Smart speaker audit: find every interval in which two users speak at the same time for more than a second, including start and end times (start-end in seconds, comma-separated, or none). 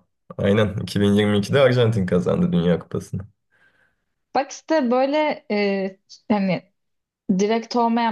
none